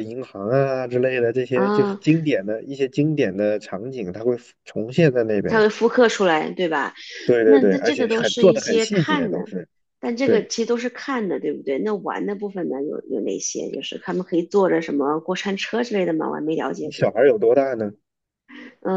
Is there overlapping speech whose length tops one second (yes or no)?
yes